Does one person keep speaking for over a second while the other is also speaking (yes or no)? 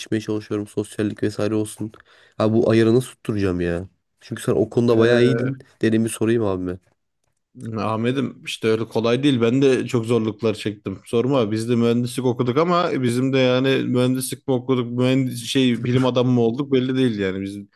no